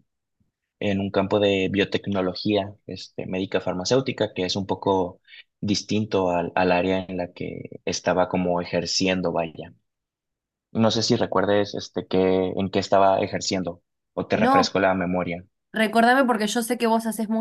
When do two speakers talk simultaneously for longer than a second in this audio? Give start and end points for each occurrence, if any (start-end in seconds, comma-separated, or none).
none